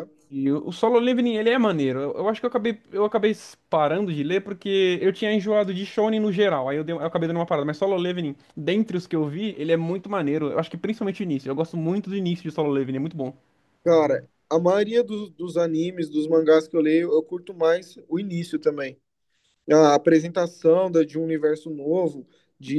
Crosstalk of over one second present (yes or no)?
no